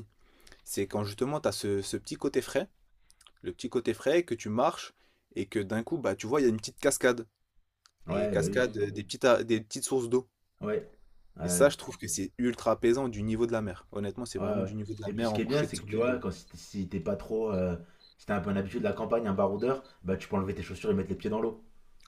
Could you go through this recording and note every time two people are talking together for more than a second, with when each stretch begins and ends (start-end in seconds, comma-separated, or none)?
14.4-16.2